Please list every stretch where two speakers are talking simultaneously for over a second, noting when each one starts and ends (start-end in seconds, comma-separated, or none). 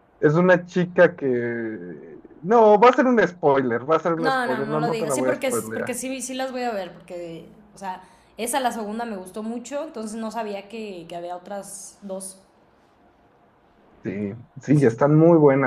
4.2-6.0